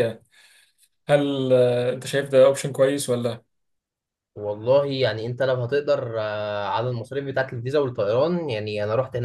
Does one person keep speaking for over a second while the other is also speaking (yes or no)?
no